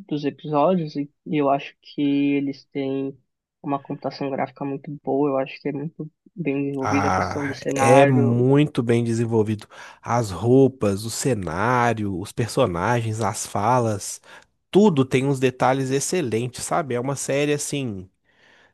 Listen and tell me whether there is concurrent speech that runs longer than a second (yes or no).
yes